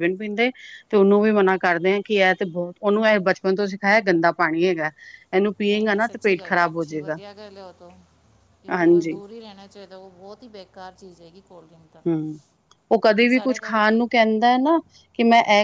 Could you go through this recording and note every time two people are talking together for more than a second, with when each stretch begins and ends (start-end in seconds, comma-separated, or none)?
5.7-7.2